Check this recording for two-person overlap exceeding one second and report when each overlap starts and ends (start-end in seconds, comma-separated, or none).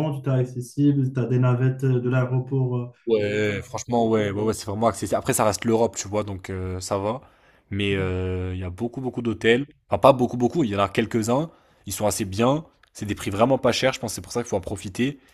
none